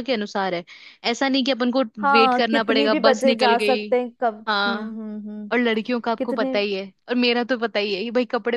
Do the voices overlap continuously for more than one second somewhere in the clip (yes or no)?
yes